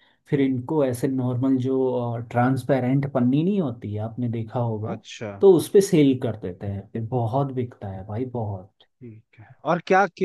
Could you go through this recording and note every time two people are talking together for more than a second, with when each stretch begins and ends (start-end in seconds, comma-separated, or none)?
none